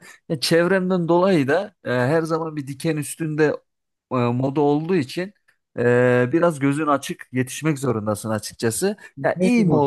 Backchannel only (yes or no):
yes